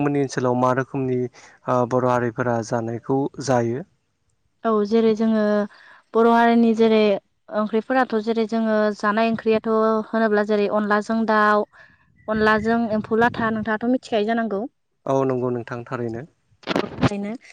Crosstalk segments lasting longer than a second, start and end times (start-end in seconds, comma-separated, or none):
none